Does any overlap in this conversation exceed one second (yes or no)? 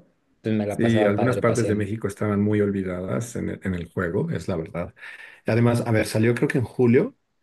yes